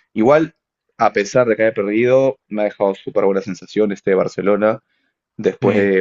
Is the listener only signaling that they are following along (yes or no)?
yes